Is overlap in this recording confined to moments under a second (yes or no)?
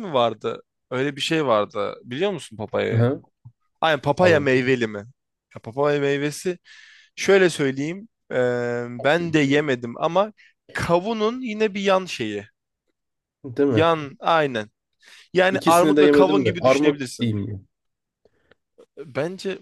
no